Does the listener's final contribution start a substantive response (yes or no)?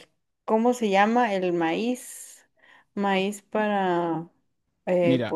yes